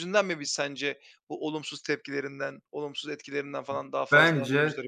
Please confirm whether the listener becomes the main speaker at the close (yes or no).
yes